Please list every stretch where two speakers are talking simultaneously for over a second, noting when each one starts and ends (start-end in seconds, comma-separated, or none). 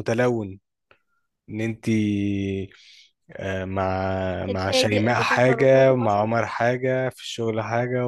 4.5-6.3